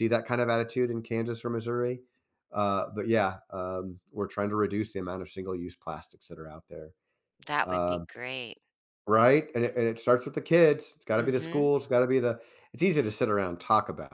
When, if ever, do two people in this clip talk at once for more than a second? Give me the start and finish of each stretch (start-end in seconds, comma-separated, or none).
none